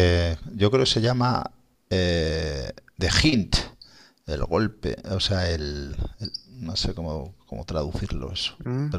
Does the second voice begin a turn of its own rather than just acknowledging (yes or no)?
yes